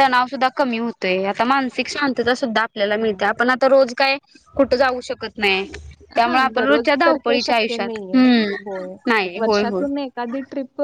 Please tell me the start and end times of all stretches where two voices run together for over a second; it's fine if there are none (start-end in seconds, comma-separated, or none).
6.2-8.6